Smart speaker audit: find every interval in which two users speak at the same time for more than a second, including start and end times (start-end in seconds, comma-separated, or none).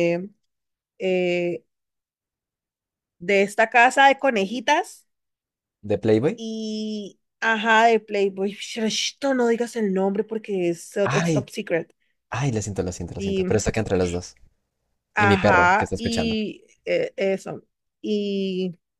15.2-16.4